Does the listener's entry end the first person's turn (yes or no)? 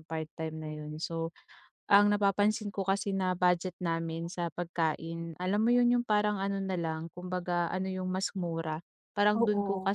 no